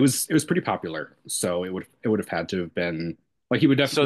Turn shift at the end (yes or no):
no